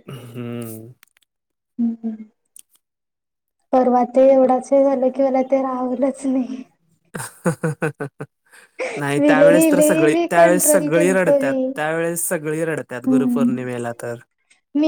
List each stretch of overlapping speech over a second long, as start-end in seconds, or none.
9.2-11.6